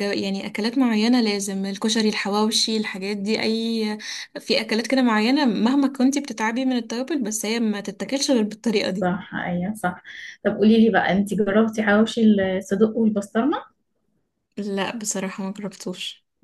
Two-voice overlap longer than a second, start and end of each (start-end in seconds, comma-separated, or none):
none